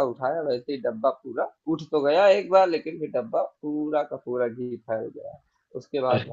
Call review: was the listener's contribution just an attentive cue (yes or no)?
yes